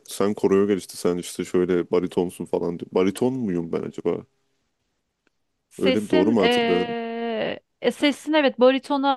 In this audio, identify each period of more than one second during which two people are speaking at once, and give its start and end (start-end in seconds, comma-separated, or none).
5.8-7.0